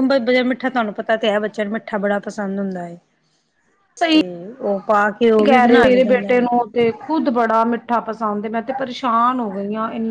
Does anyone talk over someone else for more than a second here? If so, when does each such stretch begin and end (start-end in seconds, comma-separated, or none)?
none